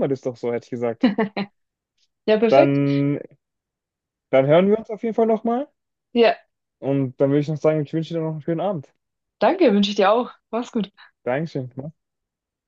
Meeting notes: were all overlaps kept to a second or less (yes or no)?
yes